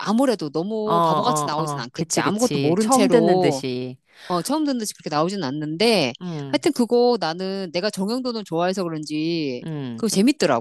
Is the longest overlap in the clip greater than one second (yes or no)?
yes